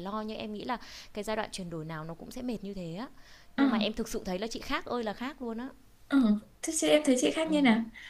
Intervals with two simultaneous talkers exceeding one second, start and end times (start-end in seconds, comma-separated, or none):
none